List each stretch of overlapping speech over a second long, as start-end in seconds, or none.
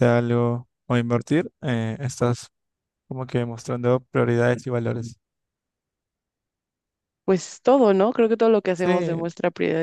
none